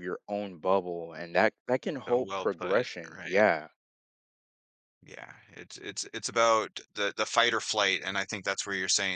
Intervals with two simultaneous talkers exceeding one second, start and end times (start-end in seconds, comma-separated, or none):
2.1-3.5